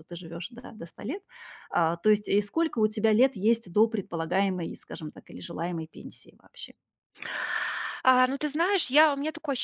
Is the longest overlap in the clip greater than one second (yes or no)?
no